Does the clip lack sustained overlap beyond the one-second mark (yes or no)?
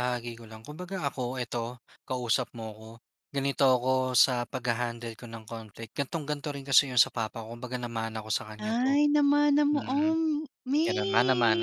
yes